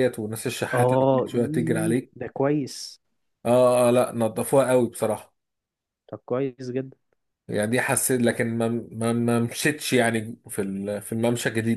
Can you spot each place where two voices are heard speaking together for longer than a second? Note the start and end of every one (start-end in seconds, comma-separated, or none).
0.7-2.1